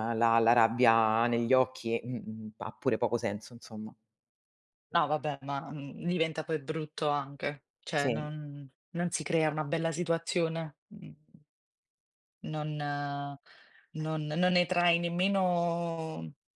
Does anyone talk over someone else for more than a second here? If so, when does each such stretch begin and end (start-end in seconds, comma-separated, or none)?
none